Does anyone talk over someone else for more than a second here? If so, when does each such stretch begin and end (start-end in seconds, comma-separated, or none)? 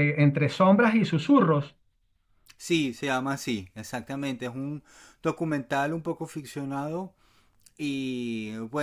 none